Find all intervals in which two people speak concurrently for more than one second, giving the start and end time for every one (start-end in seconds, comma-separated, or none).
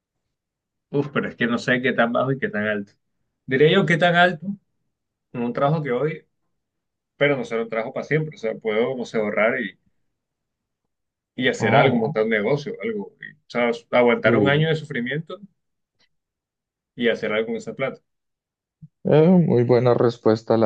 none